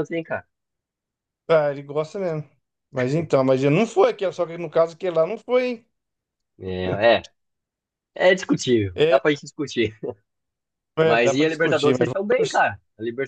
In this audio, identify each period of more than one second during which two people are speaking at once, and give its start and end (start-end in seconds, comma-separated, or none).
11.0-12.6